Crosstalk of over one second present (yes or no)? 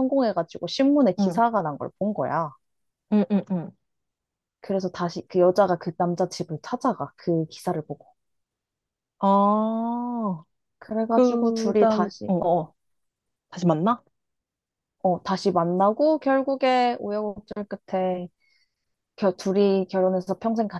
yes